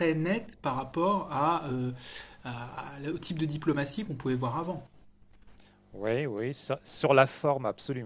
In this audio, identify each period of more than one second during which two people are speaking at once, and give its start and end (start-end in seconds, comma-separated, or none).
none